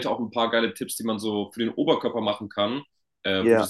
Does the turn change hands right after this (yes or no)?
no